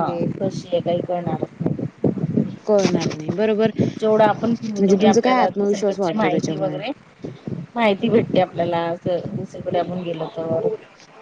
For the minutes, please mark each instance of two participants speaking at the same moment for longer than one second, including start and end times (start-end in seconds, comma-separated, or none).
4.8-6.8